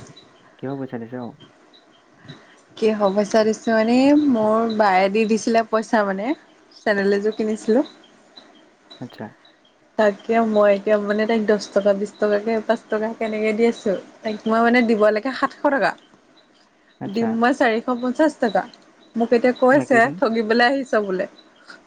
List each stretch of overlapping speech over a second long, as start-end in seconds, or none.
none